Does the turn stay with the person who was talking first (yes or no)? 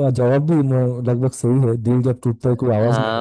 no